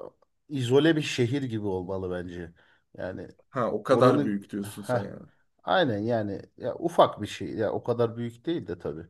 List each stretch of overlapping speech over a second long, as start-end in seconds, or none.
3.9-5.2